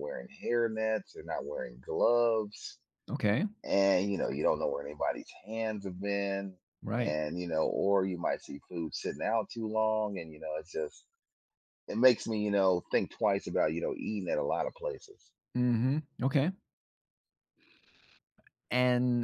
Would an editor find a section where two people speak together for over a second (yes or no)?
no